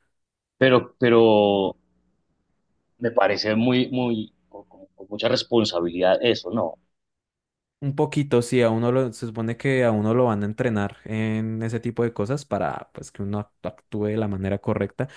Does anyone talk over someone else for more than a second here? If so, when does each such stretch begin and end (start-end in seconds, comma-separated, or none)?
none